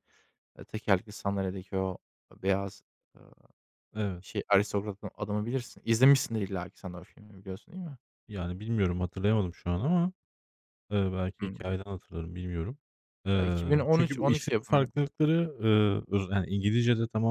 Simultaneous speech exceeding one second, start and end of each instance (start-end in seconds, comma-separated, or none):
13.4-14.9